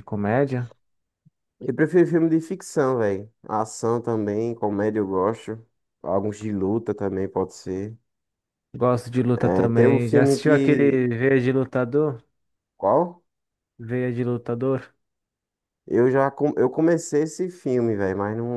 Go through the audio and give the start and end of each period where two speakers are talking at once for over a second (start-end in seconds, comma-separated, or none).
9.3-11.0